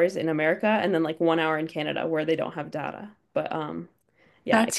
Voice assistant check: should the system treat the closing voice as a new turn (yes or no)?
yes